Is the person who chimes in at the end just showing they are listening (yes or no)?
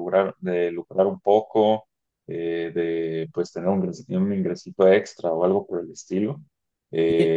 yes